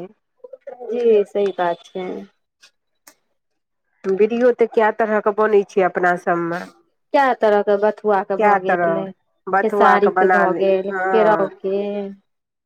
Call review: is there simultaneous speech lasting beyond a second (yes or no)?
yes